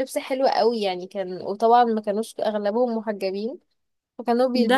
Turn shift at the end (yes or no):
yes